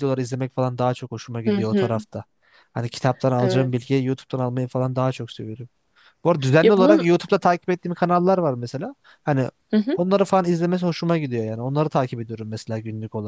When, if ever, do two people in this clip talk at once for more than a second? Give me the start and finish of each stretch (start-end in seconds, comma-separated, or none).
none